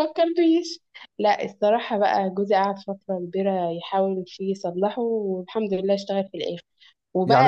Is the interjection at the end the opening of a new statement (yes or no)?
no